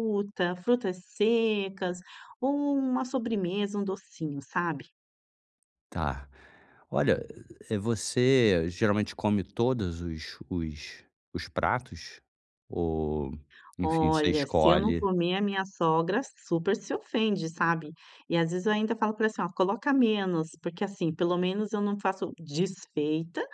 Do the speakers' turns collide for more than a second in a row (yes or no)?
yes